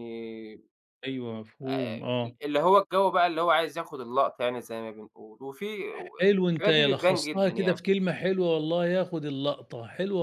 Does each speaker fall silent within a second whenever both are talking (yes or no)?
no